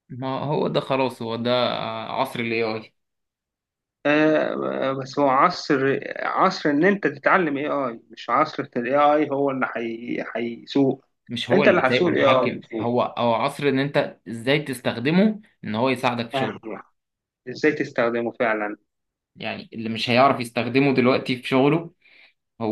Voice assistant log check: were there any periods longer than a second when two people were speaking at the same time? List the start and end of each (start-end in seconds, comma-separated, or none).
11.5-12.9